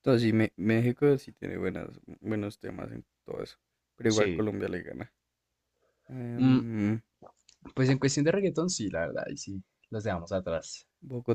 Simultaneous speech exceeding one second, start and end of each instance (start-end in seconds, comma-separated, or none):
none